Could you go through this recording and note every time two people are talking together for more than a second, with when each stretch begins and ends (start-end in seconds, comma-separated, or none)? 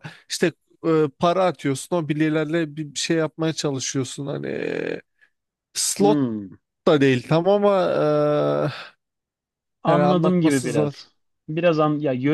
9.9-11.1